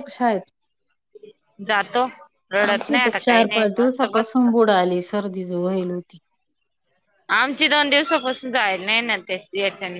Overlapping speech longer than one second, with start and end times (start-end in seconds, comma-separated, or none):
2.7-4.5